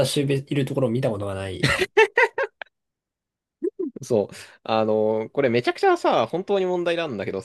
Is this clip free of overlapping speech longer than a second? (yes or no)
yes